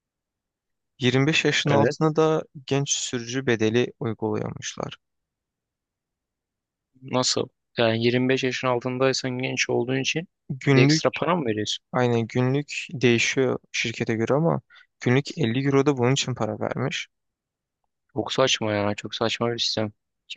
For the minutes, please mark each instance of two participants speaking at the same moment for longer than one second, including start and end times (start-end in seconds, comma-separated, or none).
none